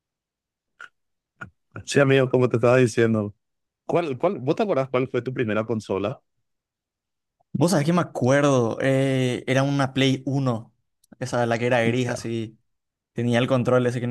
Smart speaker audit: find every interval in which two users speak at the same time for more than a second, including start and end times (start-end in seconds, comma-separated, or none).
none